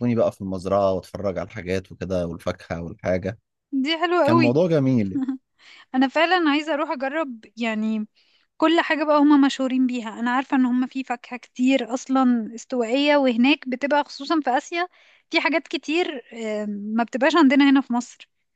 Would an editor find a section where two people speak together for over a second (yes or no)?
no